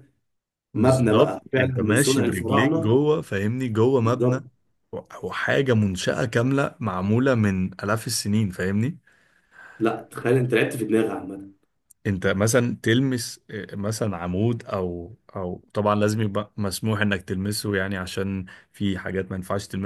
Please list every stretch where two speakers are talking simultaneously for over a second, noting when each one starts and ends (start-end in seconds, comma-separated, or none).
0.7-3.0